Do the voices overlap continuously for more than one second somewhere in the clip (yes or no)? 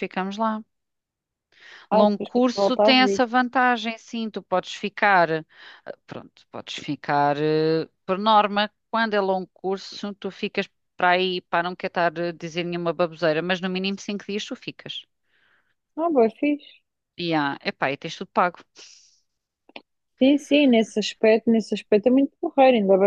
yes